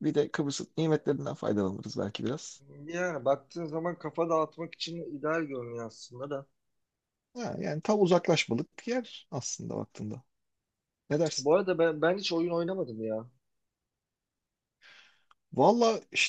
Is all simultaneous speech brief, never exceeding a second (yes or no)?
yes